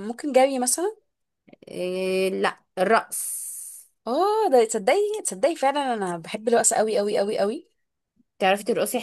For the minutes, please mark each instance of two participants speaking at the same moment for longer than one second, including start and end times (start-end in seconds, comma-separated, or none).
none